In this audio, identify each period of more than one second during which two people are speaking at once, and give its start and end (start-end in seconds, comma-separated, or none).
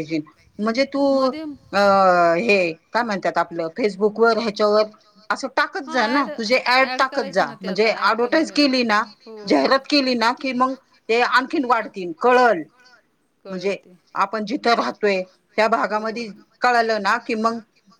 6.9-8.6